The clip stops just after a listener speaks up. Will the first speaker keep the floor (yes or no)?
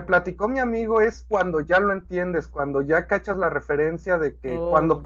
yes